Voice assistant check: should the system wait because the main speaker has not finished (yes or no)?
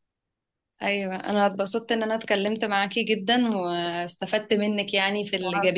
yes